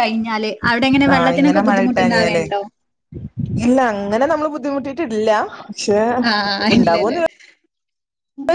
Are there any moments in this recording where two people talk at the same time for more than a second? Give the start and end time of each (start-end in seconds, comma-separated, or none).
1.1-2.4